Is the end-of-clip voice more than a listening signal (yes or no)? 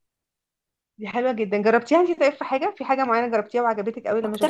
yes